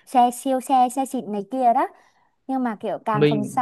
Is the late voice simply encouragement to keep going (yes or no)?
yes